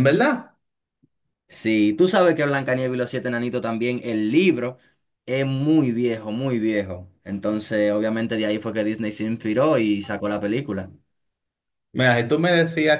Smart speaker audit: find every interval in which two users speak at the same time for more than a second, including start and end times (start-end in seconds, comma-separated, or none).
none